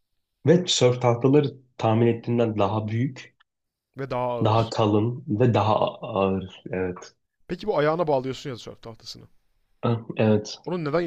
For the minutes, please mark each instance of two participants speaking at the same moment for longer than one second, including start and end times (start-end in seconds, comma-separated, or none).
none